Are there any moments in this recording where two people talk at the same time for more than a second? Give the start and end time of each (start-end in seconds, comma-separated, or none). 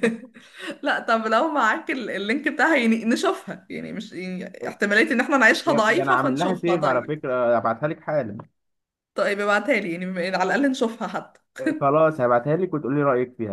5.7-7.2